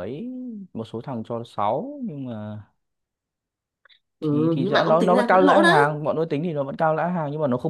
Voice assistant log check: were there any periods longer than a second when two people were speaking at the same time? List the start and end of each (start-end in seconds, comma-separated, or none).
4.3-5.9